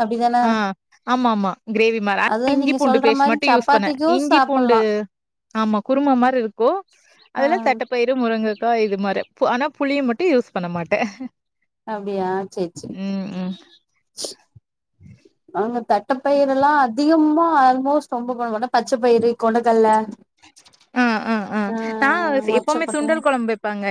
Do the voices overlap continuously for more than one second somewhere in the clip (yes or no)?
yes